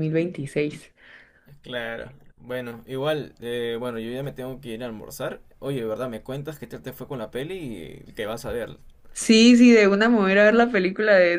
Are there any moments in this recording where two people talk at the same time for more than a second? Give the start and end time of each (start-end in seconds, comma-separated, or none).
none